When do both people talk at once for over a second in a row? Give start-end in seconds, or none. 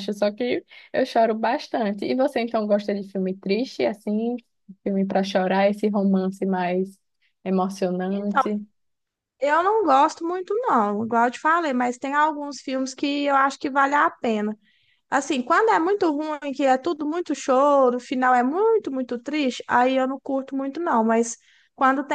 none